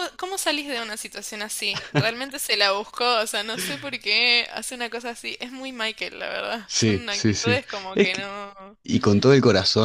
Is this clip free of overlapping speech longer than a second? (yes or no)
no